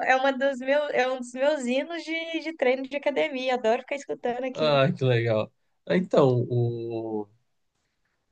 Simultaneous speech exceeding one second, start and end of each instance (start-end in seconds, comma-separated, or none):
none